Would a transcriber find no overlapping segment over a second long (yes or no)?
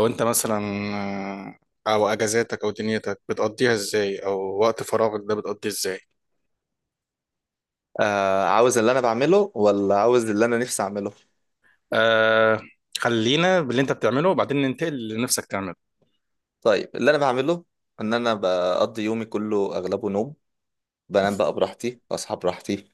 yes